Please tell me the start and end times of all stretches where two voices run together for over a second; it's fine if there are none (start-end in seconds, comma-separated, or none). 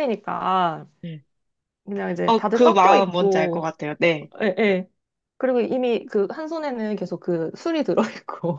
2.3-3.7